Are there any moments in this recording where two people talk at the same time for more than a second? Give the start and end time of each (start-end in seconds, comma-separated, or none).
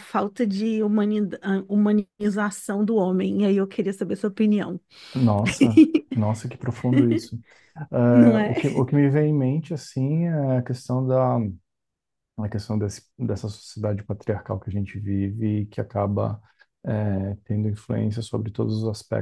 none